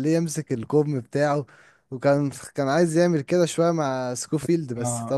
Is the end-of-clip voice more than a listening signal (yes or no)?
yes